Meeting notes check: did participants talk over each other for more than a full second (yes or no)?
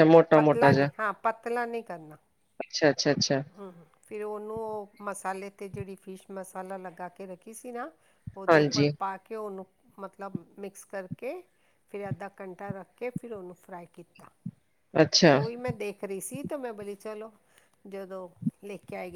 no